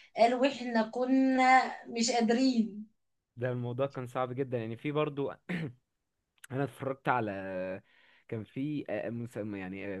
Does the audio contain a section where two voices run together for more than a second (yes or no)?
no